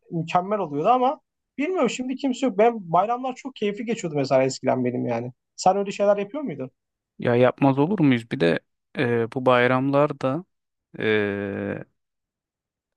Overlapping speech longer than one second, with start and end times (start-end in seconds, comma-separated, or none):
none